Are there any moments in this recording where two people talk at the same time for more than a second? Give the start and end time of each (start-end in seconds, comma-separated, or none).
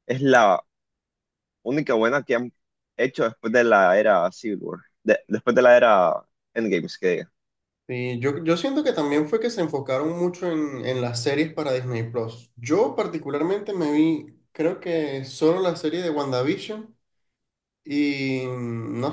none